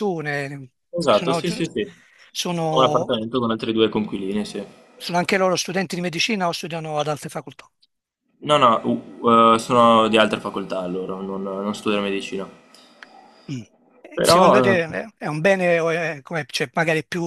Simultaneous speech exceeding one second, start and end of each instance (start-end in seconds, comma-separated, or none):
none